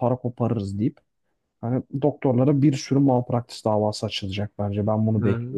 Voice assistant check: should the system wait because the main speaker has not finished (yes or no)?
no